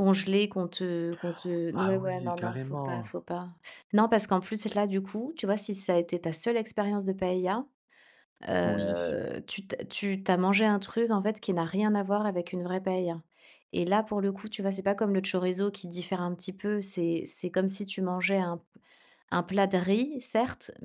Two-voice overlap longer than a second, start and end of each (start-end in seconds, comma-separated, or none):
1.7-3.1